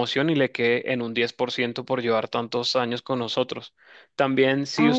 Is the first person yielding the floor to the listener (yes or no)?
no